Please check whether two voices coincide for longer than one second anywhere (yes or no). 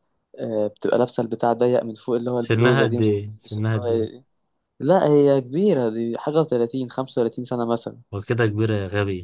yes